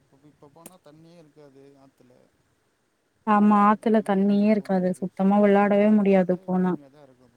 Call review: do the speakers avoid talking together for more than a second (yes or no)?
no